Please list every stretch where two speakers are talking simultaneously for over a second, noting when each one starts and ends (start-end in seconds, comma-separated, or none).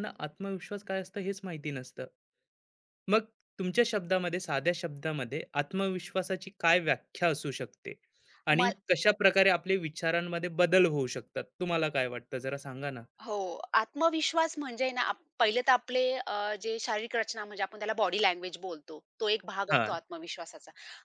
none